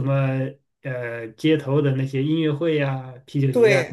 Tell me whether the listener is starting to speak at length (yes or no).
yes